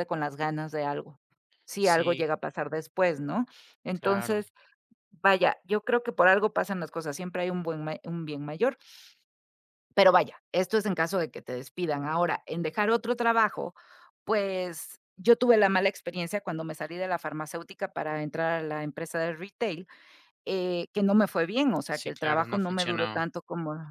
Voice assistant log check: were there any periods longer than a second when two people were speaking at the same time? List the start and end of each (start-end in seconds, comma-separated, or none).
21.9-23.3